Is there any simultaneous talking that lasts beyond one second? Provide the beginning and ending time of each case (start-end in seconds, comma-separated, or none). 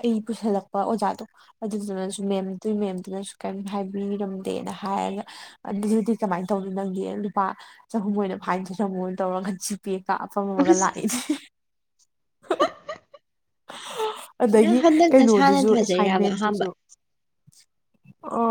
14.6-16.6